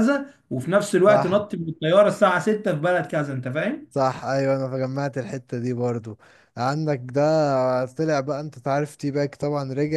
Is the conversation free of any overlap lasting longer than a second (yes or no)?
yes